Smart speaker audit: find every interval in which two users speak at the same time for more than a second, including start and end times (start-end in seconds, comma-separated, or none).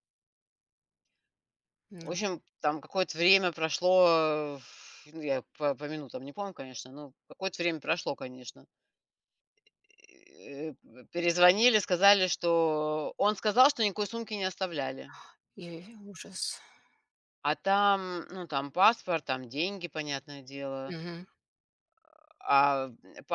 none